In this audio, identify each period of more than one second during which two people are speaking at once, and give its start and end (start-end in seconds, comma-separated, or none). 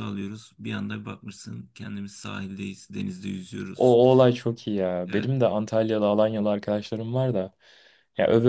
none